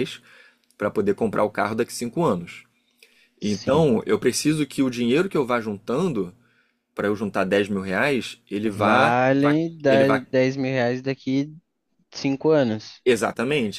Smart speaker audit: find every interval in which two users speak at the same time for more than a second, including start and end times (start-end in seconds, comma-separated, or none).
8.6-10.2